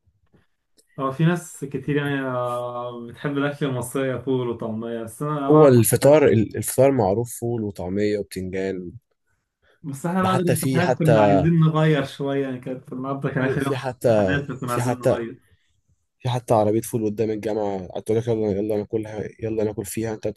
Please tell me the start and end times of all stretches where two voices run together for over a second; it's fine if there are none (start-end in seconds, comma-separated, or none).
10.2-11.4, 13.4-15.2